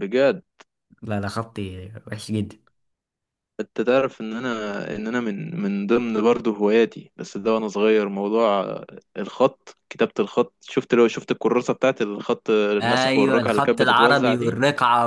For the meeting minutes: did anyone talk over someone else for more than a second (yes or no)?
yes